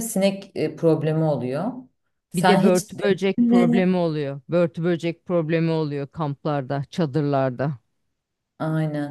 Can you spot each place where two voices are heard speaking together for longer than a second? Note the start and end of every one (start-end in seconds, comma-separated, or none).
2.3-3.9